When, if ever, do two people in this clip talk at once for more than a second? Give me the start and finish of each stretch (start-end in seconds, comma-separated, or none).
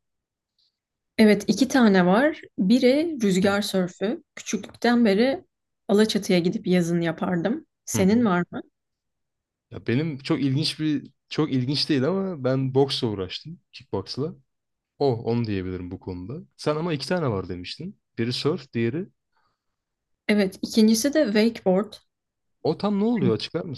none